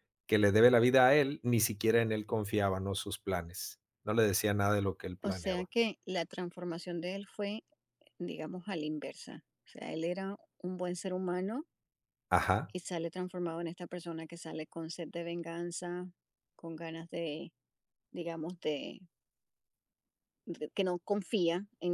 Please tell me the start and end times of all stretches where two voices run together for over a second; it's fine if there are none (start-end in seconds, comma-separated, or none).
none